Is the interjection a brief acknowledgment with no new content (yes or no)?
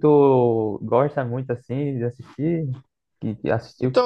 no